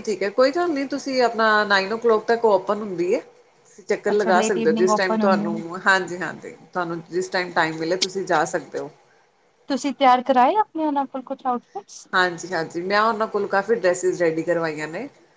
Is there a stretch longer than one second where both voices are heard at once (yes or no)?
yes